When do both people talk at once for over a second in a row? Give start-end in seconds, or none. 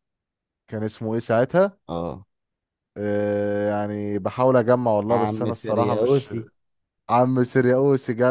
5.1-6.3